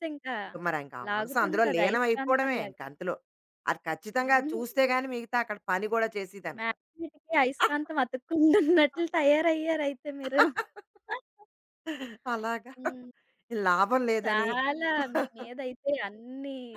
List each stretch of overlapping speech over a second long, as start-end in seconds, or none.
1.1-2.8